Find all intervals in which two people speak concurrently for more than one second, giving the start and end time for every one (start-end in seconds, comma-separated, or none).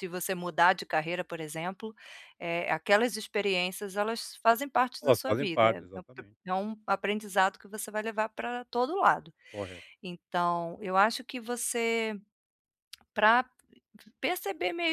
5.0-6.4